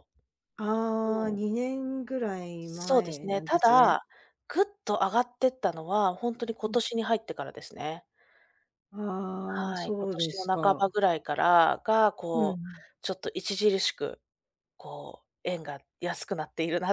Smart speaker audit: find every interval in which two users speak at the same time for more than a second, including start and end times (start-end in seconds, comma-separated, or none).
2.6-4.0, 9.4-10.9